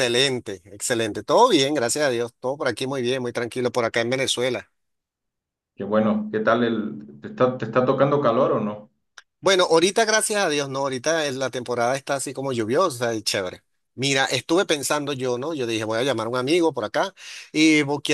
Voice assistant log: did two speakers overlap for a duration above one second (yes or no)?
no